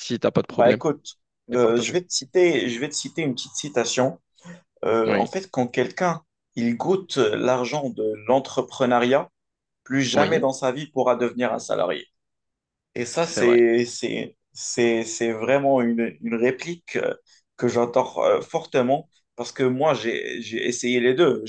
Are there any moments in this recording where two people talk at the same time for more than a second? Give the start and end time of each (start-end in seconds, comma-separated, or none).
none